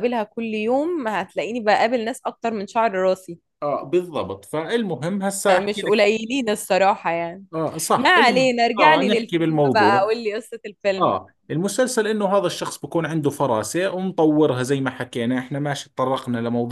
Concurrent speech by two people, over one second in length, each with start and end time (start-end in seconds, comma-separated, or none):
8.0-10.1